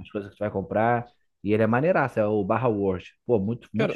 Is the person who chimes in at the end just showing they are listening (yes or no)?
no